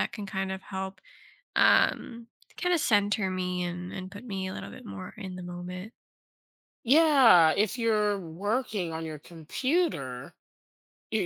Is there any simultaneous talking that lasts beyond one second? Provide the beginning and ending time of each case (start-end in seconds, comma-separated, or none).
none